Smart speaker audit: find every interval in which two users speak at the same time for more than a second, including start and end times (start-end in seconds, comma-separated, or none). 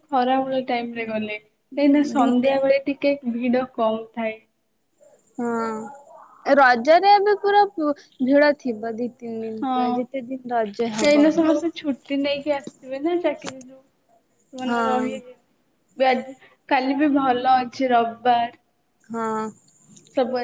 9.6-11.2